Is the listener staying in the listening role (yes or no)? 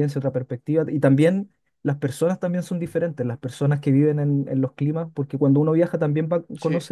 yes